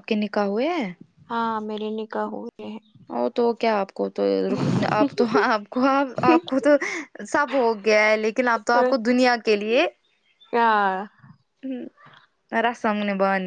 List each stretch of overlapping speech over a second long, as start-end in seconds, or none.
none